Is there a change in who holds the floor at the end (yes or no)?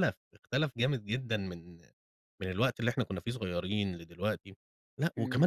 yes